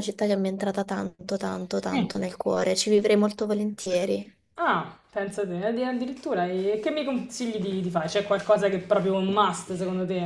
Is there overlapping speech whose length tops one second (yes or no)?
no